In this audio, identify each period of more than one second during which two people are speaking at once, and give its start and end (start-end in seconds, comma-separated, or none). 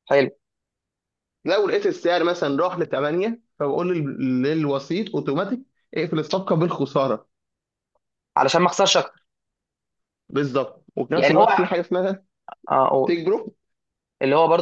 none